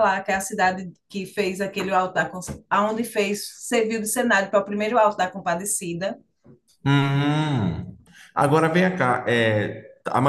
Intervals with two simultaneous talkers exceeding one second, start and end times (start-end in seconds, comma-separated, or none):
none